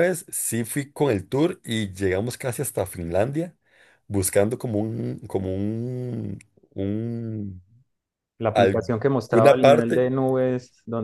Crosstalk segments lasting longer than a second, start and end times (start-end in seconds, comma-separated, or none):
8.5-10.1